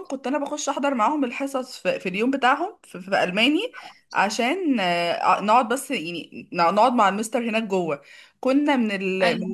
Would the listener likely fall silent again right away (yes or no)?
yes